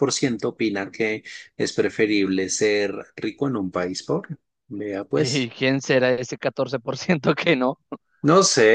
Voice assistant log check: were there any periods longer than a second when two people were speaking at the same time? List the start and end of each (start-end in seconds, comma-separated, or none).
none